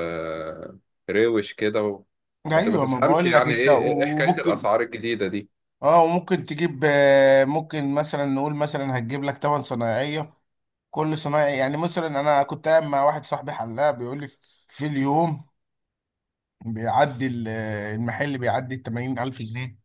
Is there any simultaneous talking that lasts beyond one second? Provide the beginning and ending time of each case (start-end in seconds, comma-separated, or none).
2.5-4.7